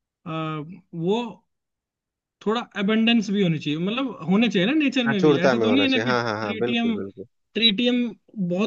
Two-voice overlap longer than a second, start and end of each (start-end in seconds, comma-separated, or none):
5.1-7.0